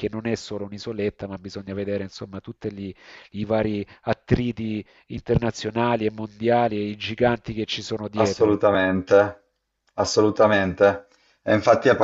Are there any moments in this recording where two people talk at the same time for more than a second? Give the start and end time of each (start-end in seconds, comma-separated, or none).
none